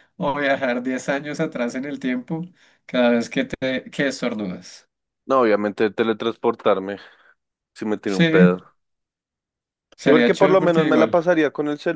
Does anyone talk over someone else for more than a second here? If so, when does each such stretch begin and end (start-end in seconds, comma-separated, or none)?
10.0-11.2